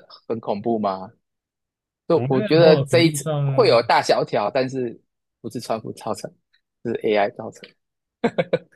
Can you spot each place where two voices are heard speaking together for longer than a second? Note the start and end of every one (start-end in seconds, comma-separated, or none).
2.1-3.8